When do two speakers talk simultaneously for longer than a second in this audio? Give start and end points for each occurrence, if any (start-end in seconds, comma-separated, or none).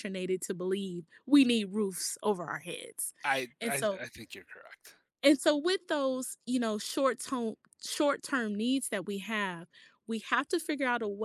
none